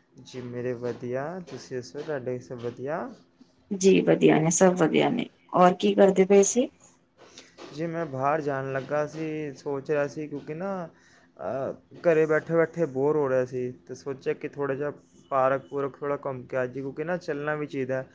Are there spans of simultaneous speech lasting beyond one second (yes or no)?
no